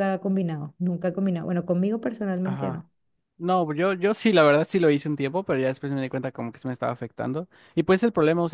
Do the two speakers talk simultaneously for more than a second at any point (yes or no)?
no